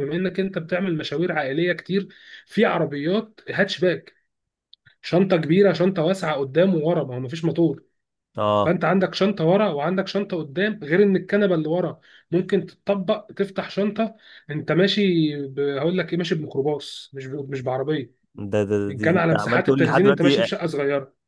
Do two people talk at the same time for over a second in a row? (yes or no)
yes